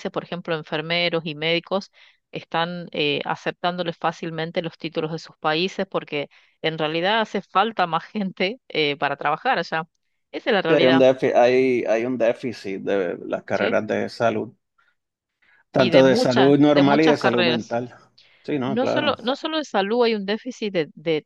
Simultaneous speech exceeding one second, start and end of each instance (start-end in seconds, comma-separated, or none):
15.7-17.8